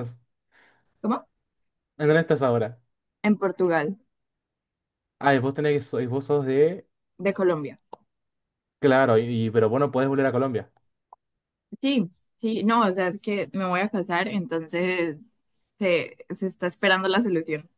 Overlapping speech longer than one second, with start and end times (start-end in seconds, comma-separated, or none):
none